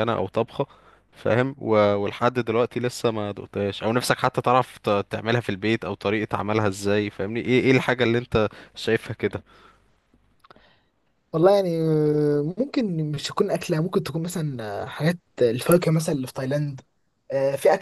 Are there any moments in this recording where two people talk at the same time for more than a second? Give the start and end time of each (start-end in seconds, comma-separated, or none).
none